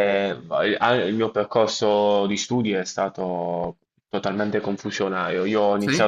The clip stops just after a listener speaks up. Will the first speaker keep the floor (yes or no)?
yes